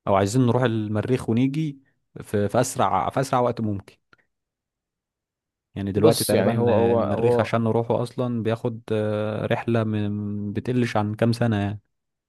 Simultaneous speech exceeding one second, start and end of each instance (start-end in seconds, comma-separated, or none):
6.0-7.5